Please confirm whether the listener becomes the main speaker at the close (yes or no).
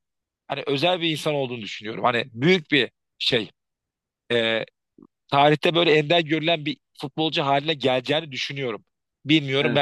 no